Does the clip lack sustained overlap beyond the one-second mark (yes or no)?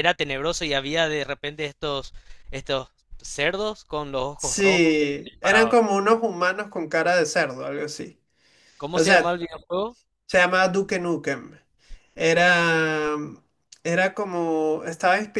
no